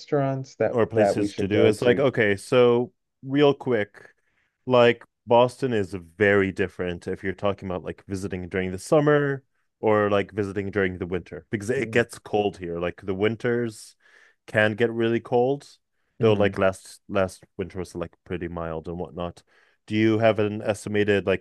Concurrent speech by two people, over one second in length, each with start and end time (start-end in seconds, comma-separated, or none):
0.7-2.0